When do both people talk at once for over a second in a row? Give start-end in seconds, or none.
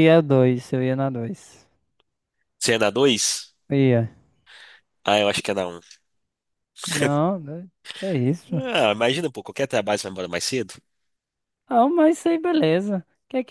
none